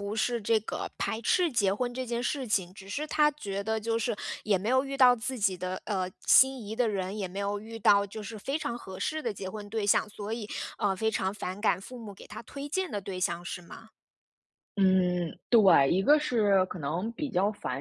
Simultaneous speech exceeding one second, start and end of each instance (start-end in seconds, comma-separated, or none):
none